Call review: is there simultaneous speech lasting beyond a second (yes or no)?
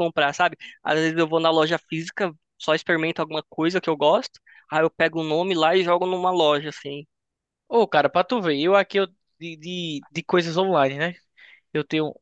no